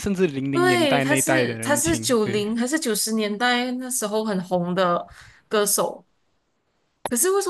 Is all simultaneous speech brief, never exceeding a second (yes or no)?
no